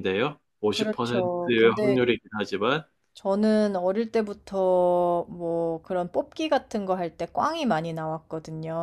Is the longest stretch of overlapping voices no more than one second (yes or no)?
no